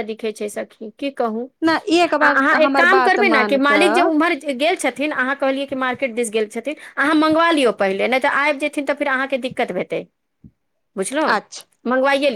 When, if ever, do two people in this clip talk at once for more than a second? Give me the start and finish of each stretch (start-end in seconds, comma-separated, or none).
2.2-4.1